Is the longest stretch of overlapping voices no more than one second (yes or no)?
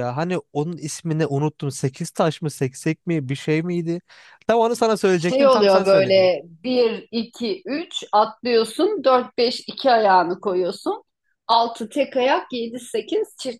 no